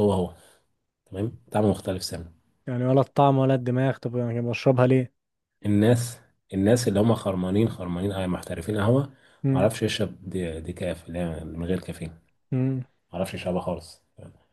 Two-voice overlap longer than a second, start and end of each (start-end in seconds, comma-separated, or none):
none